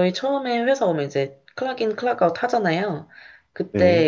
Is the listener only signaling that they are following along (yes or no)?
yes